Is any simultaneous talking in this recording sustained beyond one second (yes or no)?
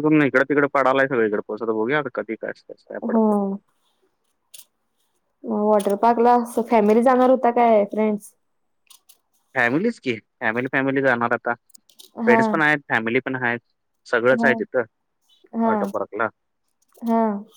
no